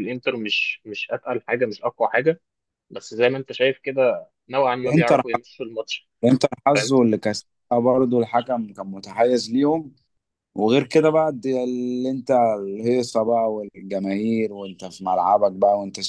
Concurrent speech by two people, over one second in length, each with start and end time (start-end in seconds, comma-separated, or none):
none